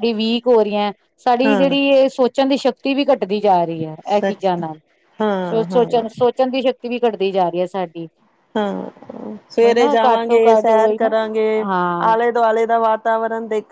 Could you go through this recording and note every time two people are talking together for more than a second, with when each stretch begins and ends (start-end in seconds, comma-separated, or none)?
9.6-11.1